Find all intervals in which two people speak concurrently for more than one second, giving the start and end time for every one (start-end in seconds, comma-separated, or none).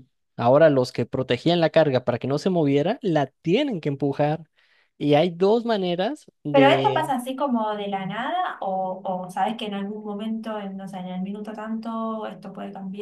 none